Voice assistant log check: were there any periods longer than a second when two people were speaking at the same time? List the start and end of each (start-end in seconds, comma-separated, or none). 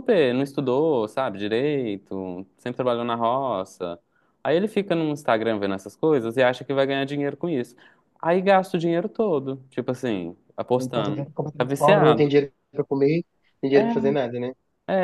10.8-12.3